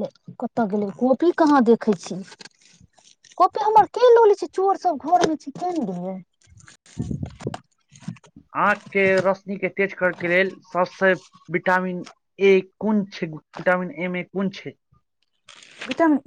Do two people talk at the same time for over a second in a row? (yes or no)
no